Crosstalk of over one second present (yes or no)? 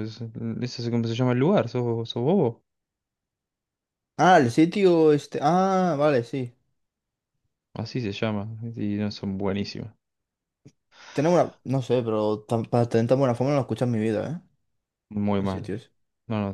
no